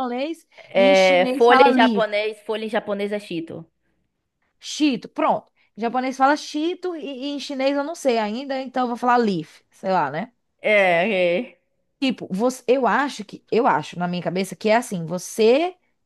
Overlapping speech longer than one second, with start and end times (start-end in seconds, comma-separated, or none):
0.6-2.1